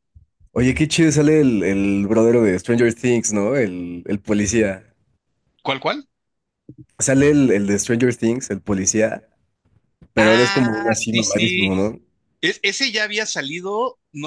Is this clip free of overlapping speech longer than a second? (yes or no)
no